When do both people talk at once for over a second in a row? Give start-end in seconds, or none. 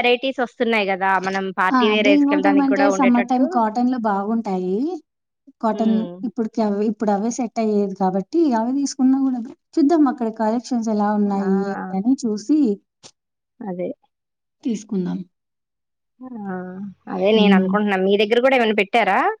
1.8-3.4